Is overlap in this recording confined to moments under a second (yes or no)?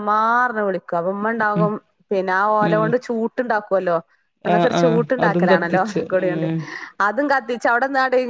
no